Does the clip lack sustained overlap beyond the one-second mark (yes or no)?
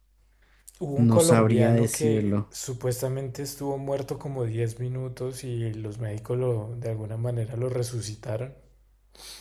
no